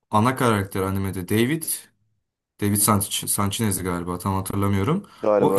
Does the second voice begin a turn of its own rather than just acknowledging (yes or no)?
no